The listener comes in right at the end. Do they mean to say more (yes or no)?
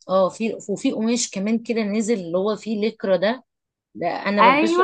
yes